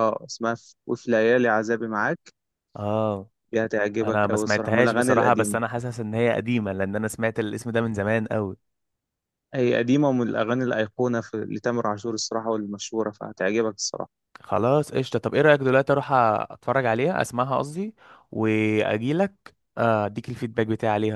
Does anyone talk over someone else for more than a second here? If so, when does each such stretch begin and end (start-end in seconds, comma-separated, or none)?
4.0-5.6